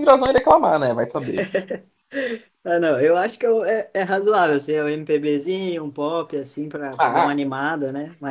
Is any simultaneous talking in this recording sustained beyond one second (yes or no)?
no